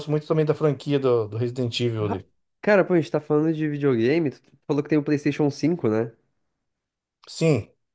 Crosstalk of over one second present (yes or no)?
no